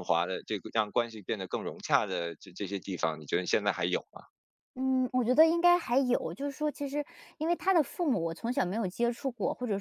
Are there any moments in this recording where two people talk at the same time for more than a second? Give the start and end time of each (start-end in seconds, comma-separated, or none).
none